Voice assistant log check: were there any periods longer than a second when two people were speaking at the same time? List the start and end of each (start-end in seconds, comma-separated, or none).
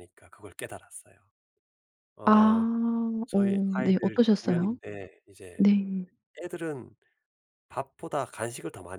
3.3-4.8